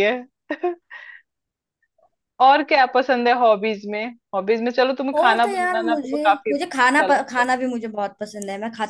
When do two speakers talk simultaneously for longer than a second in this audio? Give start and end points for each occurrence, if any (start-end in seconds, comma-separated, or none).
5.2-7.5